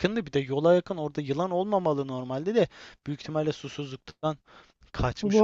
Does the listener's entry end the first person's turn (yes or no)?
yes